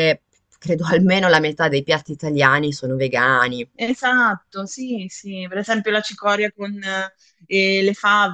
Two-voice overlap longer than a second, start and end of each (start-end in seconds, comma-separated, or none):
none